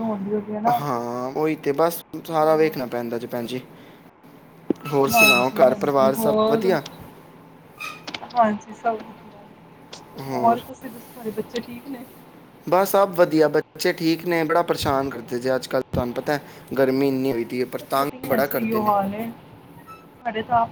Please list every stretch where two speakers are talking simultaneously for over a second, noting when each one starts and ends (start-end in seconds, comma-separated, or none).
5.1-6.7